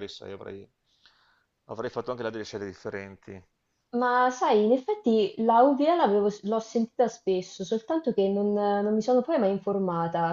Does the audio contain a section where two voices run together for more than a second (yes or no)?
no